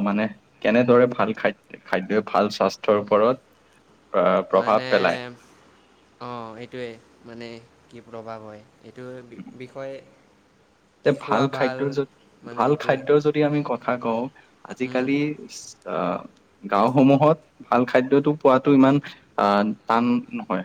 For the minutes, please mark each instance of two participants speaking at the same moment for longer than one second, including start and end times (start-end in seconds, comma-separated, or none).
none